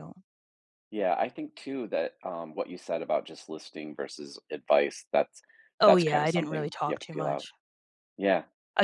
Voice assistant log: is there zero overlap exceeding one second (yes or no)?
no